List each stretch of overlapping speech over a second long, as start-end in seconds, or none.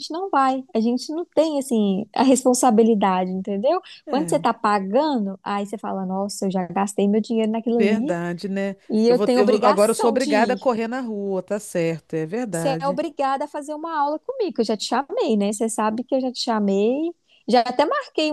8.9-10.8